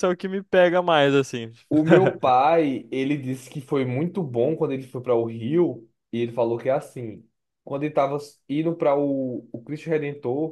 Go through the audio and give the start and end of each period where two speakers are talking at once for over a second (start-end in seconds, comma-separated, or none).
none